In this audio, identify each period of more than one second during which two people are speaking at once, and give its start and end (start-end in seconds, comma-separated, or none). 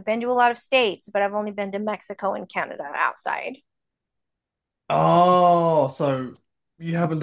none